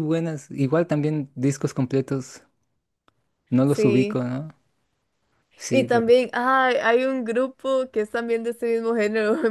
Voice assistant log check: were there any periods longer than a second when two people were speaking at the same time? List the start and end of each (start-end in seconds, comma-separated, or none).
none